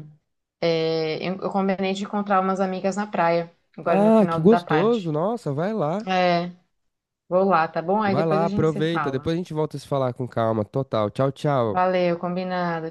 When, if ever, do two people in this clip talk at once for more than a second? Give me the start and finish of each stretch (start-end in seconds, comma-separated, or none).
3.9-5.2, 8.0-9.3